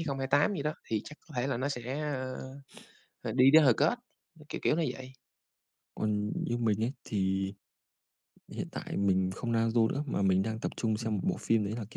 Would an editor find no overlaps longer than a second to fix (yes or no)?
yes